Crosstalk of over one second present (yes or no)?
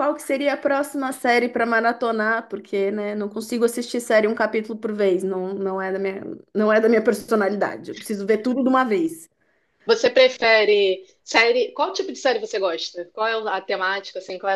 no